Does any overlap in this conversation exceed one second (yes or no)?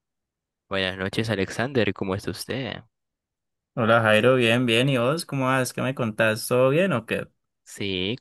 no